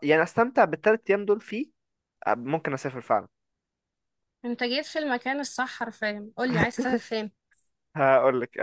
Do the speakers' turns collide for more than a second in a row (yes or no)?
no